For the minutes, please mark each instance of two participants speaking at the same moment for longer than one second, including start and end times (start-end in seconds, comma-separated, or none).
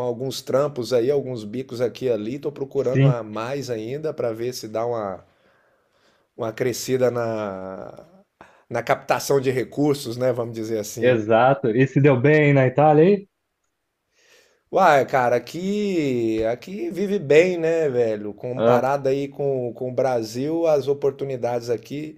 none